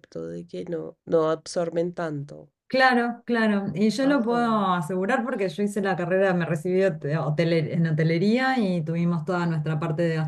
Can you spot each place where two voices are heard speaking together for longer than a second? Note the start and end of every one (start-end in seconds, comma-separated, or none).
none